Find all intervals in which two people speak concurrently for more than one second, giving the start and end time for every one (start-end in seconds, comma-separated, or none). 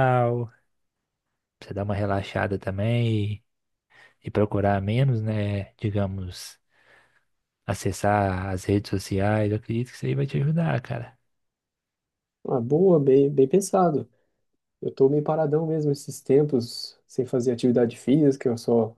none